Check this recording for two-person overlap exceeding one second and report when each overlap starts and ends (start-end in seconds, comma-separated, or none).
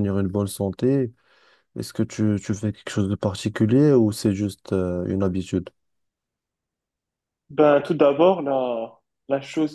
none